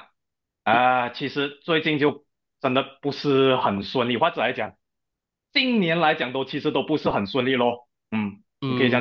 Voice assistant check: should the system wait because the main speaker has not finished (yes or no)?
no